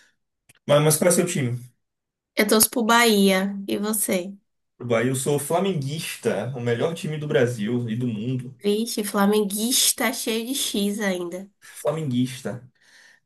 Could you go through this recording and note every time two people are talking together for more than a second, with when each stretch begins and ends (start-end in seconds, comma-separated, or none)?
none